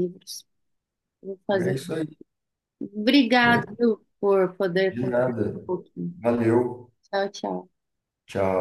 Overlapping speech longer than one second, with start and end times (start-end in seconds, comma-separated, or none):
none